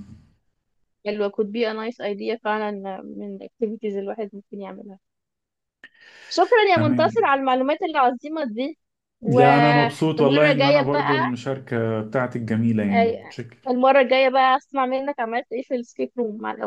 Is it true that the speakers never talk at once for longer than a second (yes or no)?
no